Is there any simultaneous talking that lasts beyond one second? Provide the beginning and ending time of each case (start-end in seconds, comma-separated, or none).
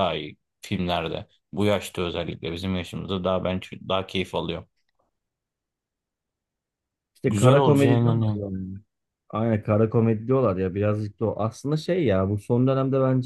7.2-8.4